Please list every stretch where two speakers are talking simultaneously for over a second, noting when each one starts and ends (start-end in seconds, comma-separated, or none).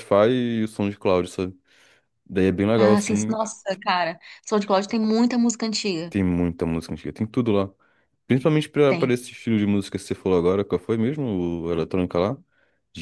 none